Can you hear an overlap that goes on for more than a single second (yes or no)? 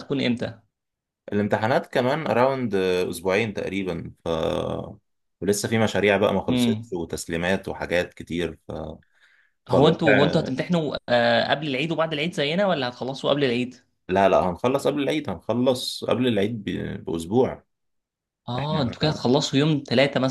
no